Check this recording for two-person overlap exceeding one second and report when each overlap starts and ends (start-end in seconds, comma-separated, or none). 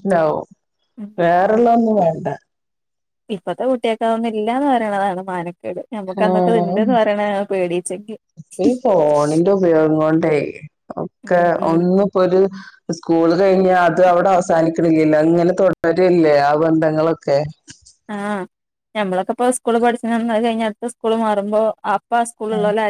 none